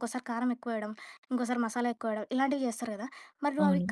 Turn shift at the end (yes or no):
no